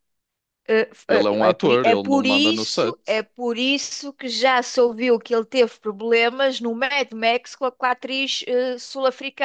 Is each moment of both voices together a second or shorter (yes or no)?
no